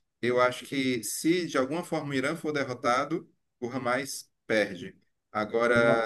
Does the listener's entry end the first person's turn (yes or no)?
no